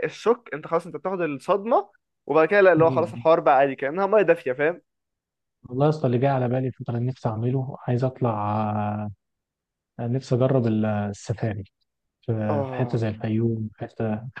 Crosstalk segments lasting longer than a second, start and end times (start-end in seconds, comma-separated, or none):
none